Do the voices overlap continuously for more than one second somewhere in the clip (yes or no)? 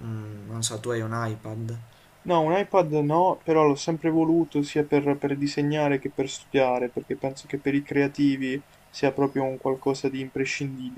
no